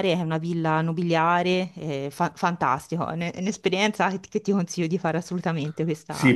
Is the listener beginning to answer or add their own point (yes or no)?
yes